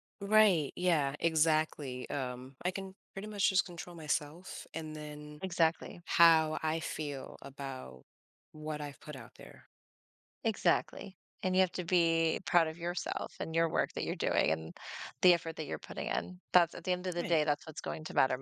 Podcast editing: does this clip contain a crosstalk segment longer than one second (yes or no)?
no